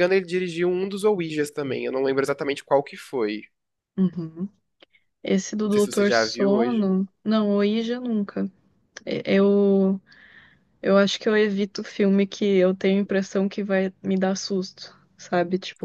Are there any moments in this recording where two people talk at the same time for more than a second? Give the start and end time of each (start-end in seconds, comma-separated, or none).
5.6-6.9